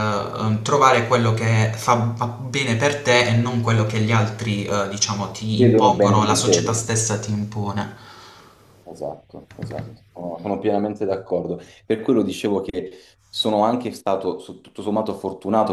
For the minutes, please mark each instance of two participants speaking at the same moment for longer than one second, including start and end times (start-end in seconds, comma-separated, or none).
5.5-6.8